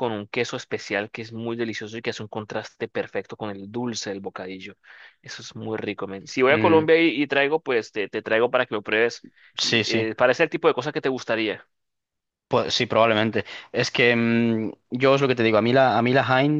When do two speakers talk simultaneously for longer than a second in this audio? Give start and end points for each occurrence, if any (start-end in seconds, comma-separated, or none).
none